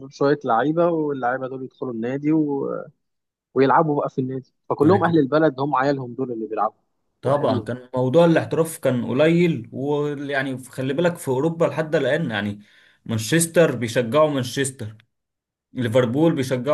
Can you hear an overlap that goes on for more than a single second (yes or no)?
no